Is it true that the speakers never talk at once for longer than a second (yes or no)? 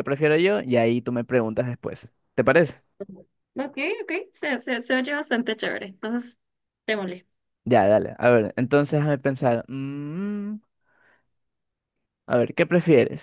yes